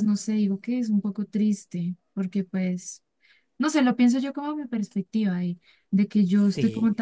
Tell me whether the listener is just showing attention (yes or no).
yes